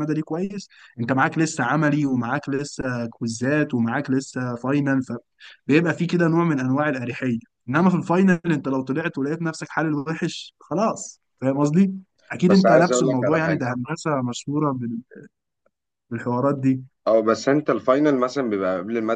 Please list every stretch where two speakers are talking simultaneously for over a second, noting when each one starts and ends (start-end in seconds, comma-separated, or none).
12.5-13.7